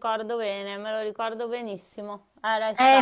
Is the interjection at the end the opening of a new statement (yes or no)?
yes